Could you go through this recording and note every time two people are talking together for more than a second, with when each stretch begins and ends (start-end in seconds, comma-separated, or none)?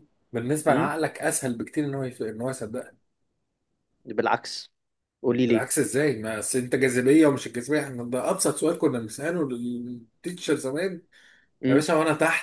none